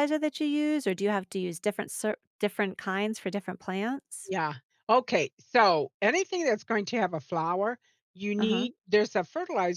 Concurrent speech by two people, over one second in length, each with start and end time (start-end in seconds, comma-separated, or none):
none